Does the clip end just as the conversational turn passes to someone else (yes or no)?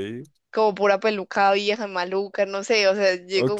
yes